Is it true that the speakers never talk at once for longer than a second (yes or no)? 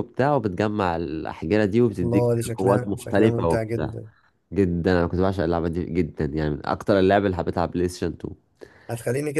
no